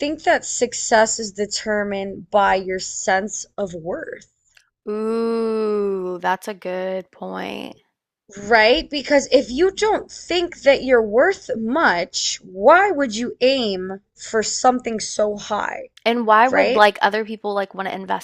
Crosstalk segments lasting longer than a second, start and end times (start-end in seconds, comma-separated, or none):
none